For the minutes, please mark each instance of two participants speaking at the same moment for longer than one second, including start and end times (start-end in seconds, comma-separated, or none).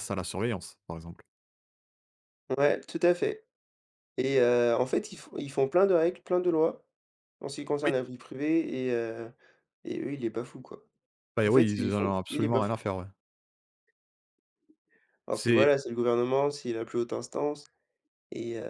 11.4-12.8